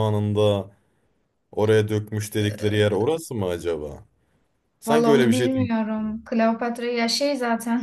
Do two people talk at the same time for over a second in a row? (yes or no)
yes